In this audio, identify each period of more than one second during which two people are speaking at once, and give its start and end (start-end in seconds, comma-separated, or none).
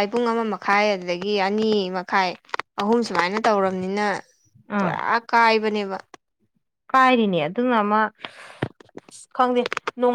none